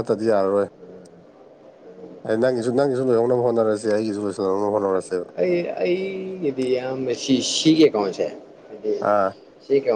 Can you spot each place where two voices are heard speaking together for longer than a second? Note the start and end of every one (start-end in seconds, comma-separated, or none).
none